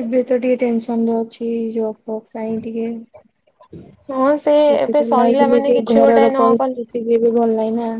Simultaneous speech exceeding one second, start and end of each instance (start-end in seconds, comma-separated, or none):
5.2-6.8